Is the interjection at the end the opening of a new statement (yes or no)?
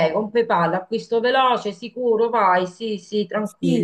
yes